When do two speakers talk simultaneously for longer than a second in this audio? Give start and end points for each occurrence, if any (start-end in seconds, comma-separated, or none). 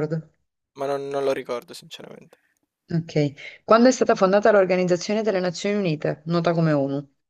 none